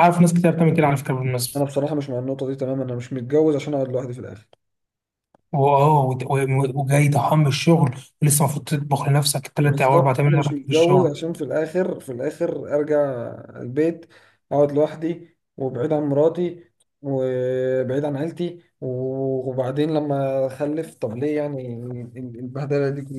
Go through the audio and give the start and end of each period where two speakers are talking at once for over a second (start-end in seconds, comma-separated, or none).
9.6-11.2